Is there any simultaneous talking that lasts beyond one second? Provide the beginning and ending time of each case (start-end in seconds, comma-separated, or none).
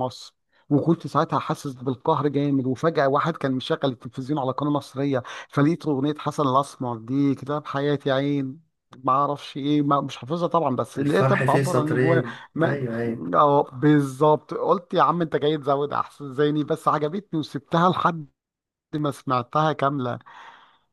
11.0-12.9